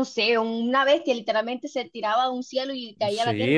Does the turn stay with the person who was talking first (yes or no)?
no